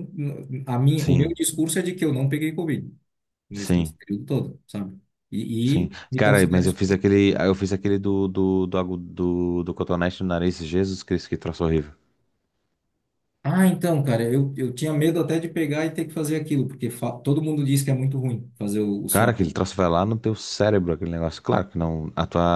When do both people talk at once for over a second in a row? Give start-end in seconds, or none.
5.6-7.0